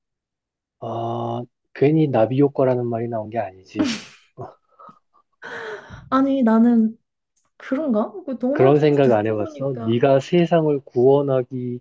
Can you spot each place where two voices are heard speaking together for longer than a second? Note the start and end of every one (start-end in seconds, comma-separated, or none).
8.5-10.0